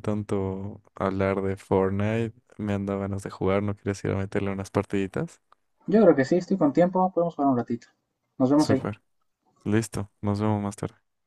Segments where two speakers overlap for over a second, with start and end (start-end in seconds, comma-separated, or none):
none